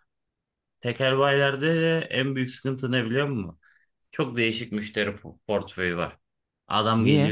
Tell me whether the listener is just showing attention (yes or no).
yes